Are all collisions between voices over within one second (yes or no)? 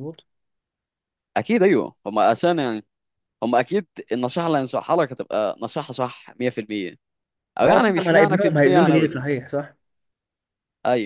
no